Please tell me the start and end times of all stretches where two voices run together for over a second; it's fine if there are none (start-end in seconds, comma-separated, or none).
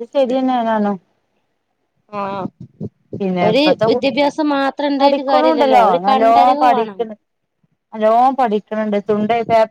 5.0-7.0